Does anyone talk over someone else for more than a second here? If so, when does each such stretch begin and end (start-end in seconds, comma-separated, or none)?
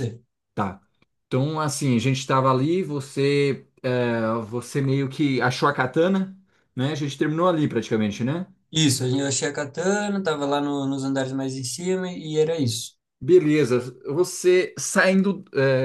none